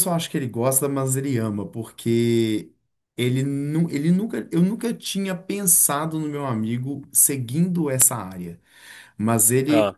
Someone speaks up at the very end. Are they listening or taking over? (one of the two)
listening